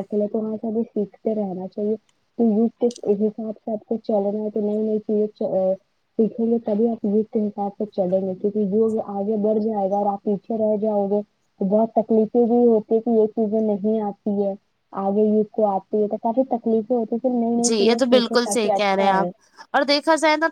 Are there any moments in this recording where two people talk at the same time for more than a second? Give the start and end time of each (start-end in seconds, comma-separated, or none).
17.6-19.3